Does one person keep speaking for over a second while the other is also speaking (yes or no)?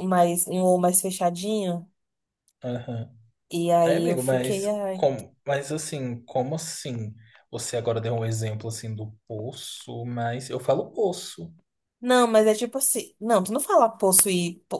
yes